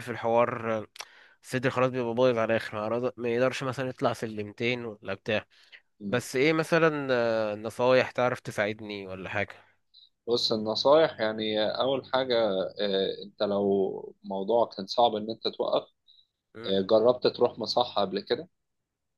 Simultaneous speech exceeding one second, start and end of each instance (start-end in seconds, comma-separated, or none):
none